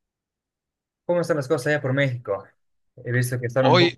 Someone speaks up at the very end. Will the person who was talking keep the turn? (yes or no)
yes